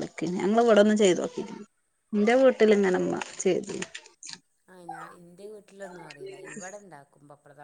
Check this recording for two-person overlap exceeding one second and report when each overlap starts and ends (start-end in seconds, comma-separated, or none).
none